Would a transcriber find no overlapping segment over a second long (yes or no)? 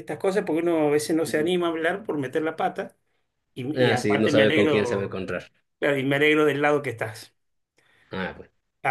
no